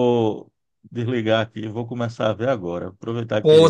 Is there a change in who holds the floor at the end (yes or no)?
no